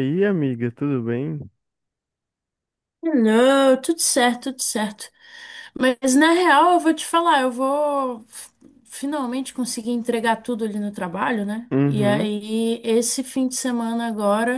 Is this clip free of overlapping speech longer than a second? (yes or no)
yes